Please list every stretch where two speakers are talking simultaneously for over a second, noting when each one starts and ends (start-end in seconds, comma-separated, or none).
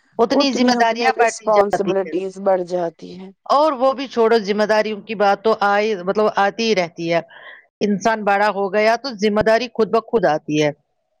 0.5-2.1